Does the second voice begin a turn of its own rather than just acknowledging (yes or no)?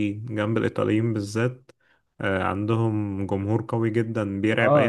yes